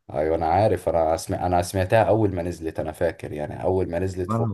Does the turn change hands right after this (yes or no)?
no